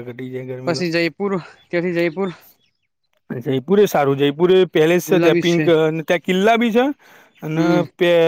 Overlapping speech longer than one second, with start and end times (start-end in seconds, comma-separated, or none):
none